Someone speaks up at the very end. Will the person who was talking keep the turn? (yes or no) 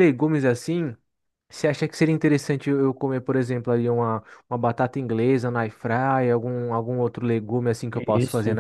yes